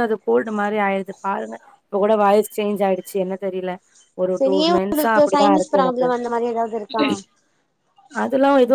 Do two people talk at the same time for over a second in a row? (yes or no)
yes